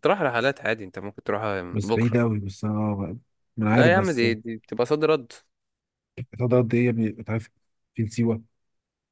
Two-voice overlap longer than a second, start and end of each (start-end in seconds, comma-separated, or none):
none